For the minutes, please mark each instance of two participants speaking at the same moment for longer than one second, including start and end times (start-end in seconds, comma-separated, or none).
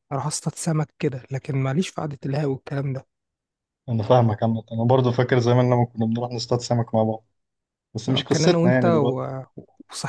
8.1-9.3